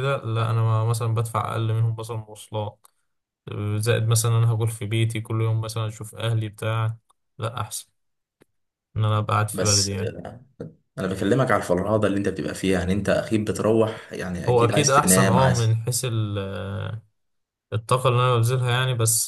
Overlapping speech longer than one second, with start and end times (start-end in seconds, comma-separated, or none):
14.5-15.8